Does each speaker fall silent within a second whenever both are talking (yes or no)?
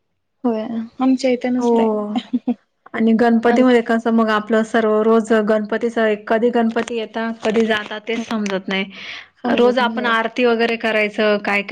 yes